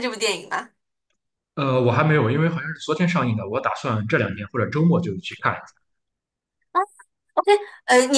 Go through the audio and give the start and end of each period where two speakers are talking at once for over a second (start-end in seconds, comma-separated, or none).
none